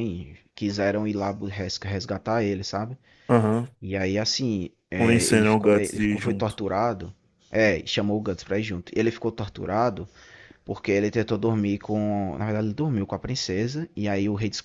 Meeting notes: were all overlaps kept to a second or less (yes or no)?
no